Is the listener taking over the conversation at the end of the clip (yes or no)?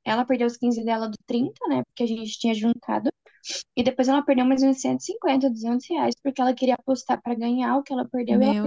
yes